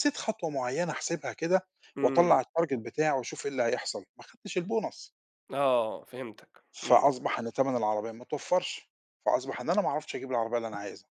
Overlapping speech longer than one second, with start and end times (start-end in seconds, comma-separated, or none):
none